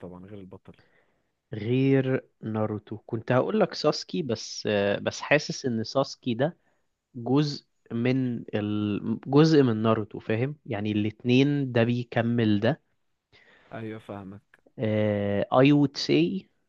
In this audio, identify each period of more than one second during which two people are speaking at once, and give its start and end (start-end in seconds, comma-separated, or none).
none